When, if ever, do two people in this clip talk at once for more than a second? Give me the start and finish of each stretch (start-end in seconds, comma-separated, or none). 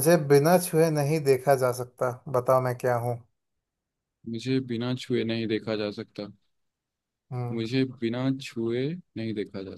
none